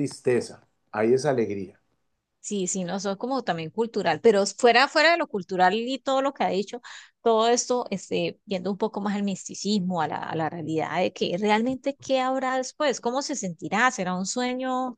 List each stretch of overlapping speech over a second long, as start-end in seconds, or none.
none